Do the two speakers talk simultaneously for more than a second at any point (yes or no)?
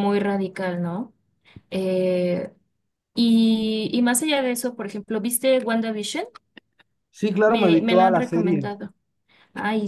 yes